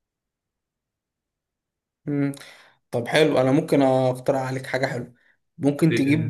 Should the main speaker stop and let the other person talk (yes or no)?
no